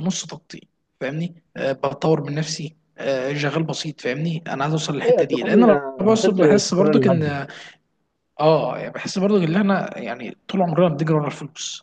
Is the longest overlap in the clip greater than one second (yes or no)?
yes